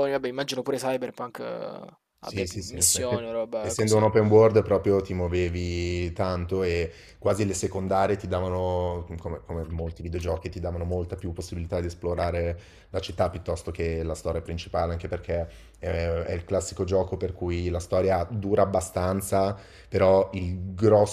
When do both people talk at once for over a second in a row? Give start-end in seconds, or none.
2.2-4.1